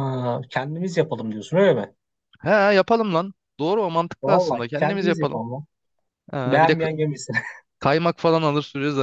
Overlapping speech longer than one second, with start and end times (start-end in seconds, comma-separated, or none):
4.2-5.4